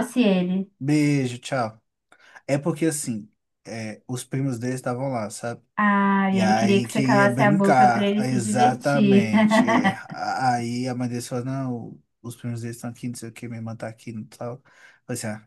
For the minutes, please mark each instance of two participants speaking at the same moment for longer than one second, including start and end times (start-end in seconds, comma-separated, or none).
6.3-9.3